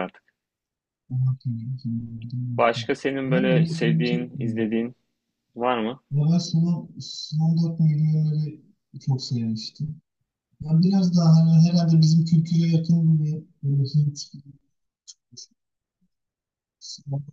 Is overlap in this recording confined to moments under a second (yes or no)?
no